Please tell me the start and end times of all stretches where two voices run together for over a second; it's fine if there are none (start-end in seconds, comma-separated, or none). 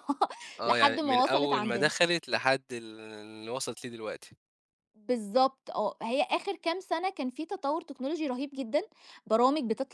0.7-1.9